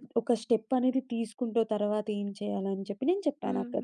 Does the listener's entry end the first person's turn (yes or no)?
yes